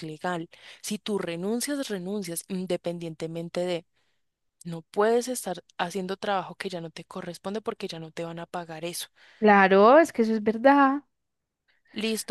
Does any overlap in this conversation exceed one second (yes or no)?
no